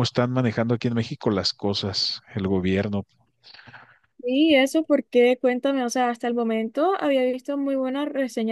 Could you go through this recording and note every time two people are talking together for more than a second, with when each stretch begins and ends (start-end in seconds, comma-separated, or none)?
none